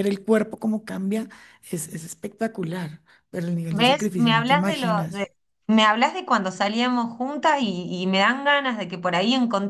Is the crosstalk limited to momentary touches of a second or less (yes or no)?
no